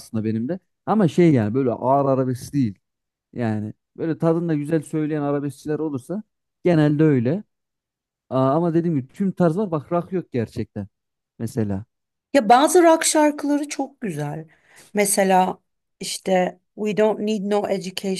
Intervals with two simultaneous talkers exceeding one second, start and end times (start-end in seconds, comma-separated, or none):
none